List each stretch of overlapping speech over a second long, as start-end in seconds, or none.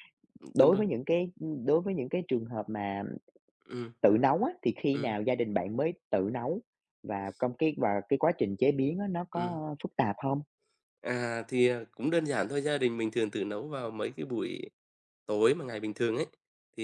none